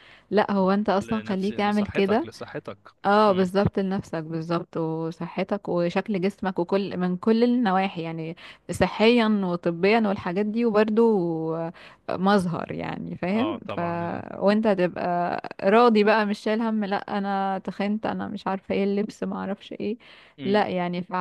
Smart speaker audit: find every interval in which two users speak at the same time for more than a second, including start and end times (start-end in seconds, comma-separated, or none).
1.0-2.3